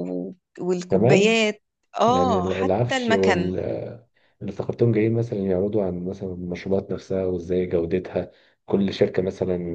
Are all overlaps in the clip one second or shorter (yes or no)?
no